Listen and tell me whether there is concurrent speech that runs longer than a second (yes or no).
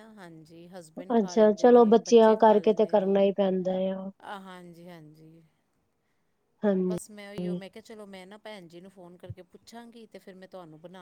yes